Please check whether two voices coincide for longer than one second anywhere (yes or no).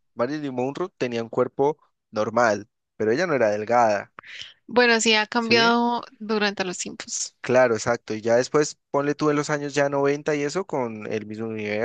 no